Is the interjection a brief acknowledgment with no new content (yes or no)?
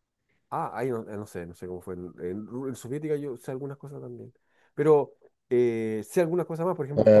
no